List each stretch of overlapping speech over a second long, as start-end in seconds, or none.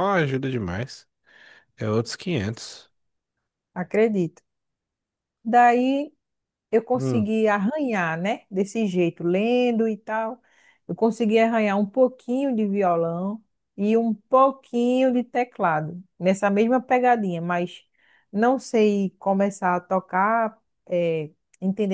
none